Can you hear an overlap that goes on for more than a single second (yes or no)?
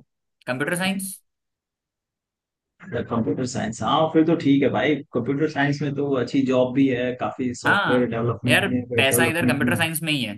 yes